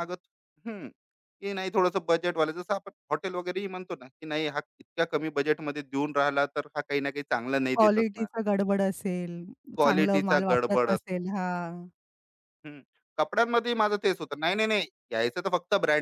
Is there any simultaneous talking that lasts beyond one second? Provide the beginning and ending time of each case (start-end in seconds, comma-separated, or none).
9.8-11.2